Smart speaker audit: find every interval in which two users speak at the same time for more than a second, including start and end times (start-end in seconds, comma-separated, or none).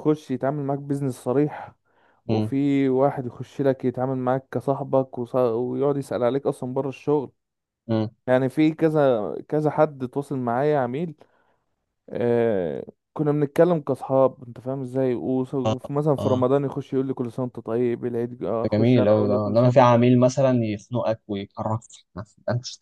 18.6-20.1